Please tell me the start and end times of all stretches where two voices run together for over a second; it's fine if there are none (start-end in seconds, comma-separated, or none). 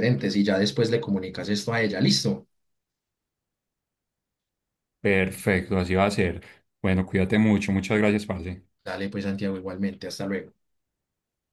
none